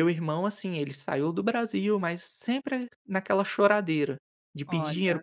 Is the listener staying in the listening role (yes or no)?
yes